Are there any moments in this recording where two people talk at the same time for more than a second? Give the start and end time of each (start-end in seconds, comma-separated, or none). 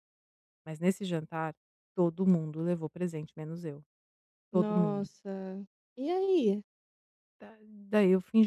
none